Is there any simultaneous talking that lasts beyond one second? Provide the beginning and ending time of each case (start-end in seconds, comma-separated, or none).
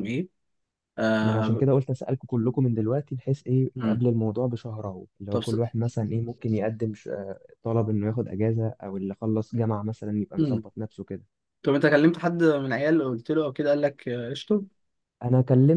none